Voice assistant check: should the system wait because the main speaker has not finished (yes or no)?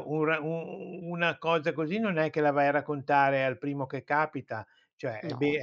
yes